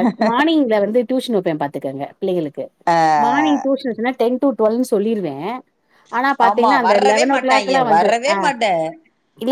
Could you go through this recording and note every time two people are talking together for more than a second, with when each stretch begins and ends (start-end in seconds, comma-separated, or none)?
6.5-8.4